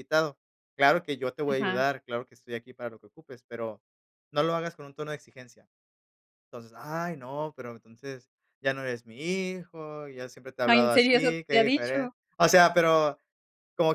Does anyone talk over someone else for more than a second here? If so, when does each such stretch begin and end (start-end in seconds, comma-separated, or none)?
10.7-12.1